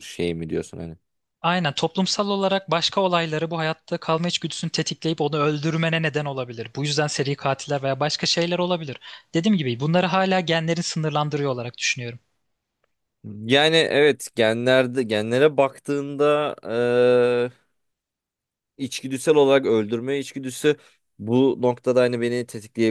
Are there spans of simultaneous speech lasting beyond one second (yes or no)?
no